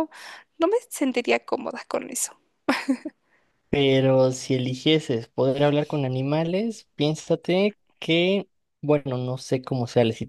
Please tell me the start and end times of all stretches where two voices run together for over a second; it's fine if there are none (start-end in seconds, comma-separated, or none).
none